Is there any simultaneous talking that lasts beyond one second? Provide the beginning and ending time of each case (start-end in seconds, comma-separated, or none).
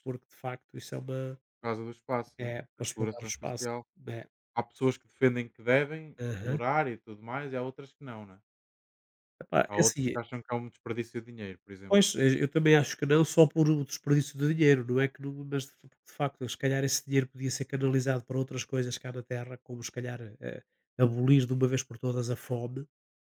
2.4-3.8